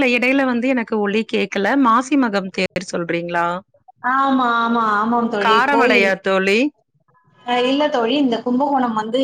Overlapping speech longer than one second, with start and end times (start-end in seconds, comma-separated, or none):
none